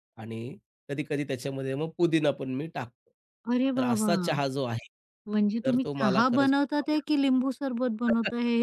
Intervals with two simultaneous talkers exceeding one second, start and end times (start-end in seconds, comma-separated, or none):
5.6-7.2